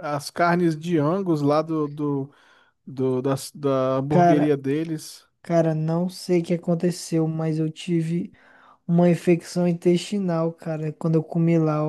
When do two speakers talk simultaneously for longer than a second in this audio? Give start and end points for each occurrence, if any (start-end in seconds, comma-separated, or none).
none